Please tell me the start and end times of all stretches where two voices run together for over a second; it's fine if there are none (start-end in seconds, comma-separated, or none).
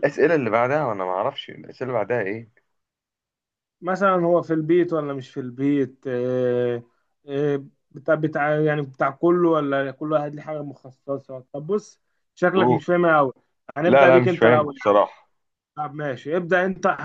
13.8-15.0